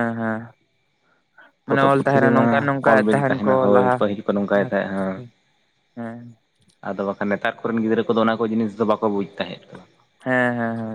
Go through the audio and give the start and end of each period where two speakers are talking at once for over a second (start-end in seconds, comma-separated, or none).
1.7-4.0